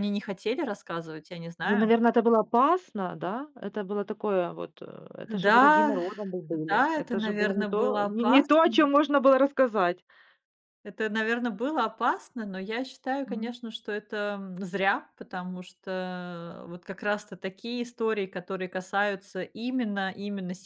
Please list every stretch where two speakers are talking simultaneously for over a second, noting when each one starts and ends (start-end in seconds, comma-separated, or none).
6.7-8.9